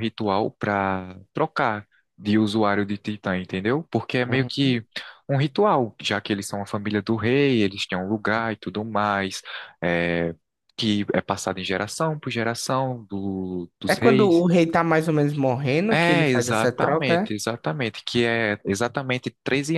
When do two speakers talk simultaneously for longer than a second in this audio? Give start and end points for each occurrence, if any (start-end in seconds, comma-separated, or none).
15.9-17.4